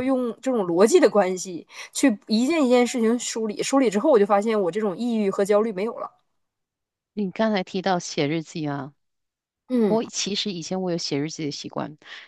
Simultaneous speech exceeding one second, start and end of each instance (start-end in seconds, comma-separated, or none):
none